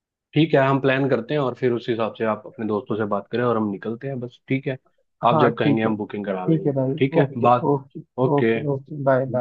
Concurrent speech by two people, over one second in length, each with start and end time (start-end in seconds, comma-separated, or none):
5.3-7.7